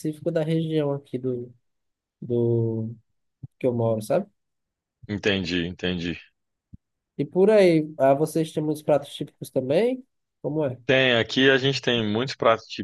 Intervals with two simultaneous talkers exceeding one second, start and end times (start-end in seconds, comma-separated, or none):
none